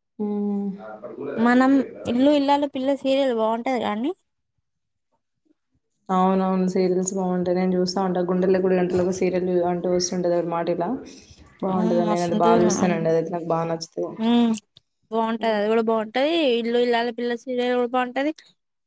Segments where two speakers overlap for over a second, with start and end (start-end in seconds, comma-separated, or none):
none